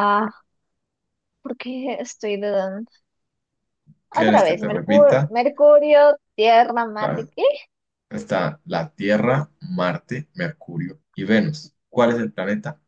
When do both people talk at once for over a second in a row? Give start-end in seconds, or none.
4.1-5.3